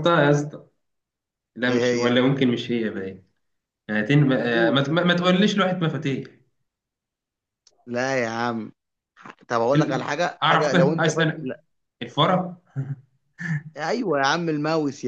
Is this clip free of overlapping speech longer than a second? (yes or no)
no